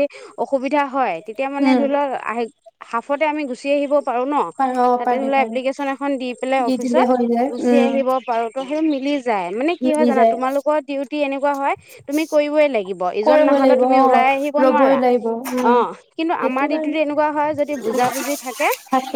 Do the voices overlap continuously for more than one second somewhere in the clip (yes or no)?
yes